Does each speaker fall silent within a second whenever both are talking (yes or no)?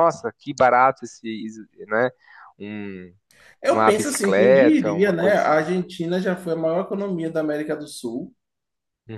no